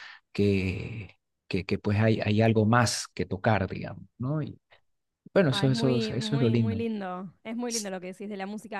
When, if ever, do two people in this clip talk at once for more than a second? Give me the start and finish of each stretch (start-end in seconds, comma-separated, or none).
5.5-6.8